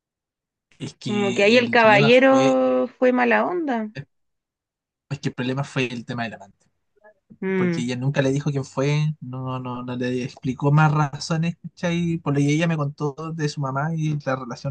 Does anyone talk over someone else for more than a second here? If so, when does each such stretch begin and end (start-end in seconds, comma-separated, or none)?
1.1-2.5